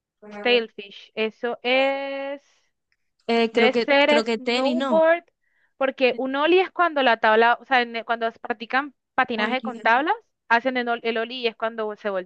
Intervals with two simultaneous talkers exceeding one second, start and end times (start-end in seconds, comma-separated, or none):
3.5-5.0